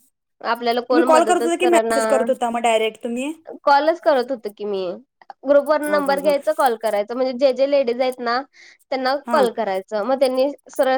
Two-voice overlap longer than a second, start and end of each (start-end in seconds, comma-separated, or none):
0.5-2.2